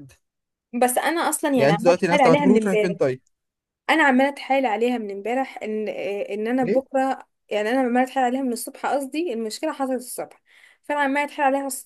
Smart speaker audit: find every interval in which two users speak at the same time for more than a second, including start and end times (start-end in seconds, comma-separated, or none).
1.6-3.0